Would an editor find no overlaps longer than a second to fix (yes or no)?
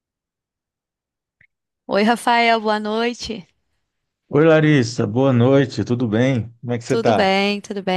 yes